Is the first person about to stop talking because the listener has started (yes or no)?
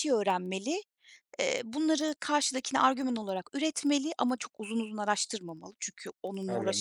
yes